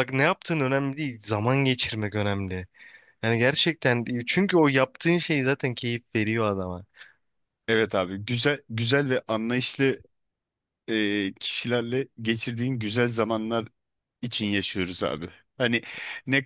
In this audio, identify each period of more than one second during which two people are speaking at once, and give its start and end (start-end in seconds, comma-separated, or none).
none